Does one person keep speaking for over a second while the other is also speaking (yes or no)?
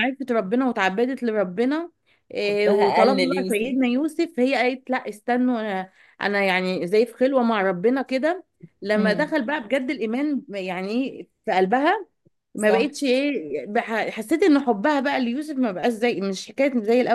yes